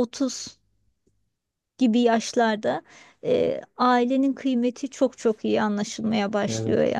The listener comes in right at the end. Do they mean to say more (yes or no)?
yes